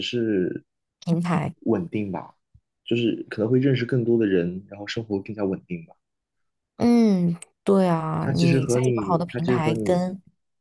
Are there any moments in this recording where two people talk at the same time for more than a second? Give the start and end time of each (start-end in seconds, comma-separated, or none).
8.2-10.0